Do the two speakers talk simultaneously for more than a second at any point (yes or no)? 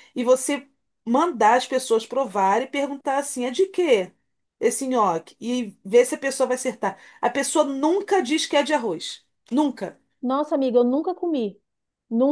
no